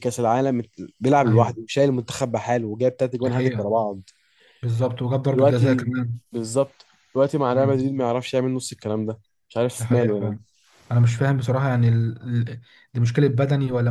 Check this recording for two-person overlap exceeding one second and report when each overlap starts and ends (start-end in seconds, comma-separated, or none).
none